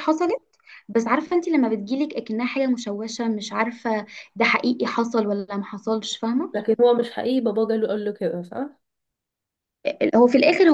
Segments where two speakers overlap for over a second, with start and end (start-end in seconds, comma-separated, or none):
none